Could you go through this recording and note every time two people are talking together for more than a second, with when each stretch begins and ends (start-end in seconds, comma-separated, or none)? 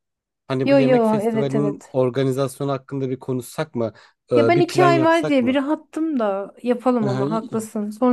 0.6-2.0, 4.3-5.6